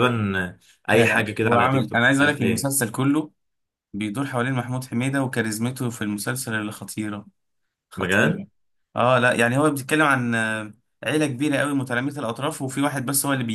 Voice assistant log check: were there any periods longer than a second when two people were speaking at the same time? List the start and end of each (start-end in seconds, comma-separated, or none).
0.9-2.7